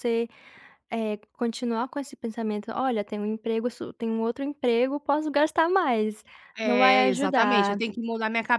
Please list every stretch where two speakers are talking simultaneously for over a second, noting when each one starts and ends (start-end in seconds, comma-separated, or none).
6.6-7.8